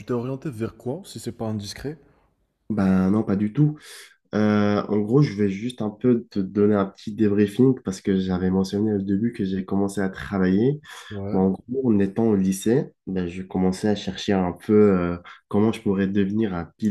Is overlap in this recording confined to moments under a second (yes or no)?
yes